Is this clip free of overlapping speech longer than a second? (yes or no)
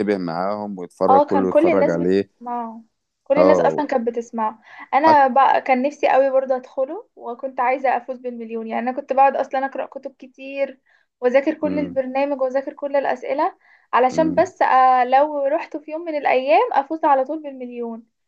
no